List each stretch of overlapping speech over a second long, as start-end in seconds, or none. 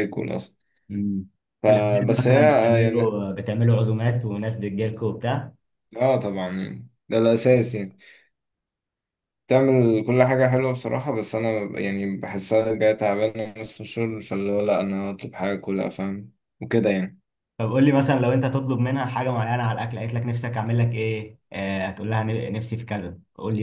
1.7-3.2